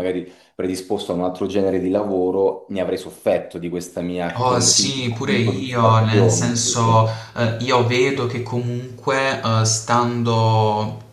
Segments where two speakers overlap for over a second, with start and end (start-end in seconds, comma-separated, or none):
4.3-7.1